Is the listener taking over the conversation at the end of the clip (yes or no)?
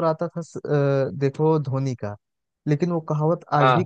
no